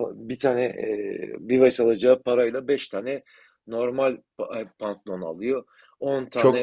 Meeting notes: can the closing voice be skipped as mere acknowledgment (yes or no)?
yes